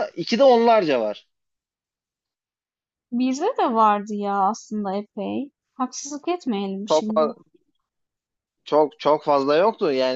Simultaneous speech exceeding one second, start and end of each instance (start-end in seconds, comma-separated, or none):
none